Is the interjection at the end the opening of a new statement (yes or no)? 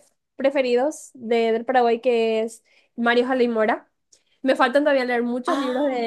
no